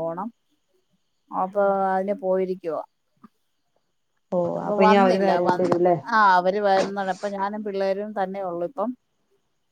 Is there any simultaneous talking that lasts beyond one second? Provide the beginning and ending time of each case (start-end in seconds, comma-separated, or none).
none